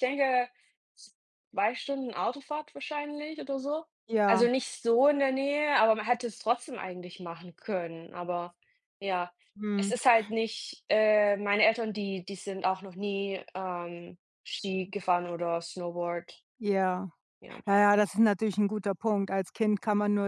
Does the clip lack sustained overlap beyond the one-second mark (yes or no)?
yes